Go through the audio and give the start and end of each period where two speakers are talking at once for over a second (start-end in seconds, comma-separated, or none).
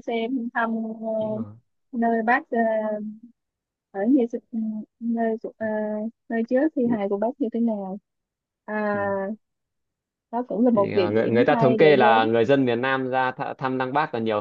10.7-12.3